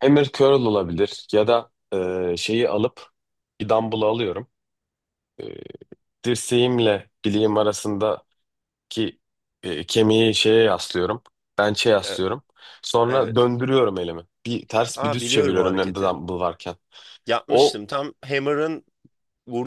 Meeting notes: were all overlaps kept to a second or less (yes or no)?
no